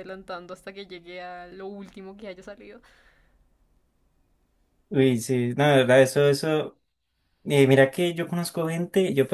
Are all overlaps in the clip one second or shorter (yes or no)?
yes